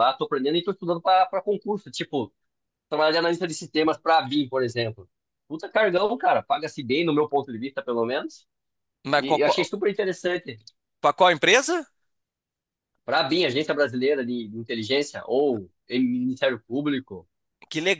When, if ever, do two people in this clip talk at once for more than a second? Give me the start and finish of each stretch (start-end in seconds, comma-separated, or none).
none